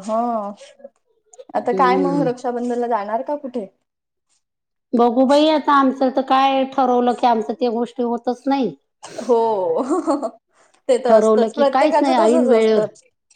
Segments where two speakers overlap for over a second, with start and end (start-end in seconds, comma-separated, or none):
11.1-12.8